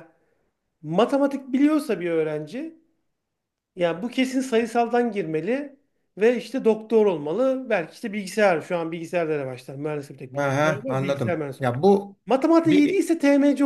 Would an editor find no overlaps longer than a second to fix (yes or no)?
no